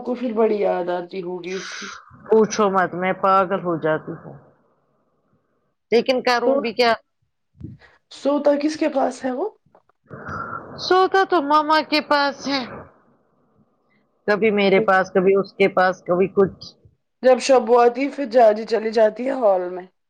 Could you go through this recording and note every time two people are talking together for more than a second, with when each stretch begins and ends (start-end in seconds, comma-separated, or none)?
none